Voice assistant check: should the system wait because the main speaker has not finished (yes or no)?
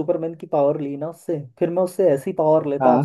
yes